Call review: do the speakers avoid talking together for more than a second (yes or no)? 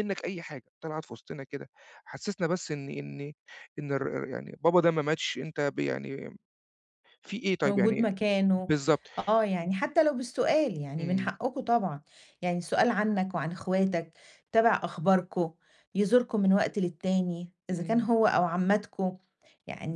yes